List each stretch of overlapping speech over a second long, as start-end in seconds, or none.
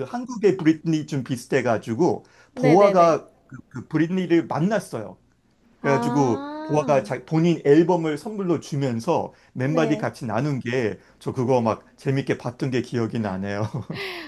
5.8-7.1